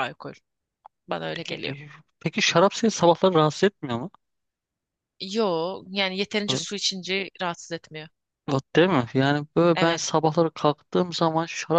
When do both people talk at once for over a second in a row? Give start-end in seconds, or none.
none